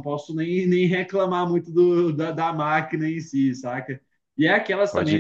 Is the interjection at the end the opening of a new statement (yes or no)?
no